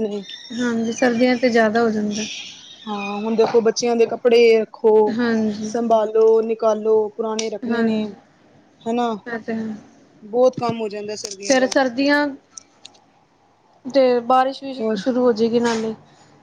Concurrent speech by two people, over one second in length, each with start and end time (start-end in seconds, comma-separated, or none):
none